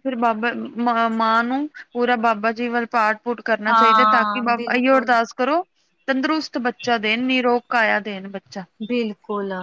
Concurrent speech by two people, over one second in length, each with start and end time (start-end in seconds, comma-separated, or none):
3.7-5.1